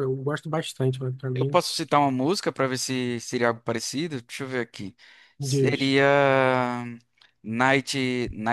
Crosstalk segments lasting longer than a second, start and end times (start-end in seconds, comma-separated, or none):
none